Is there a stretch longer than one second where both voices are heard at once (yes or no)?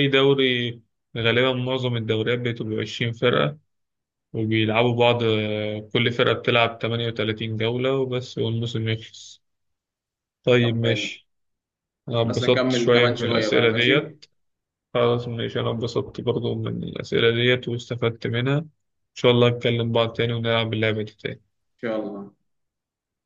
yes